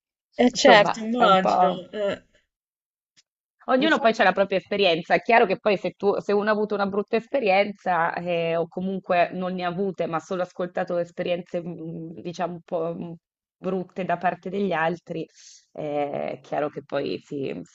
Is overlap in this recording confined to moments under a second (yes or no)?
no